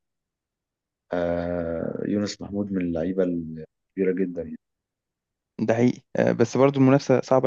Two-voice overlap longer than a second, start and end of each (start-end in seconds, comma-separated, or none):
none